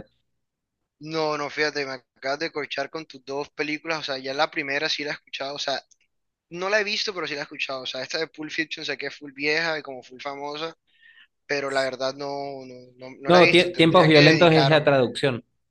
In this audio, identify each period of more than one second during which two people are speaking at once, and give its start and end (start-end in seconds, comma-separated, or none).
13.3-14.9